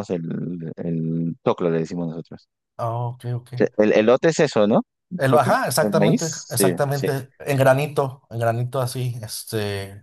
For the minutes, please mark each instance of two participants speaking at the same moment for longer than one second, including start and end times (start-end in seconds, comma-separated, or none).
5.2-7.1